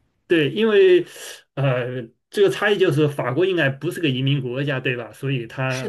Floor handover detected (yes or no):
no